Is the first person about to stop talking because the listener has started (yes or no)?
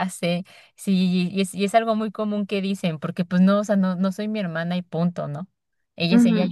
yes